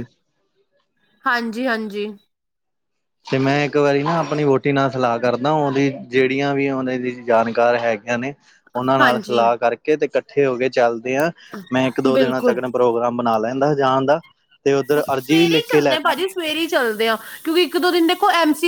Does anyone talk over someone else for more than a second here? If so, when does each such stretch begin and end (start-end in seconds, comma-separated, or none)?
14.9-16.3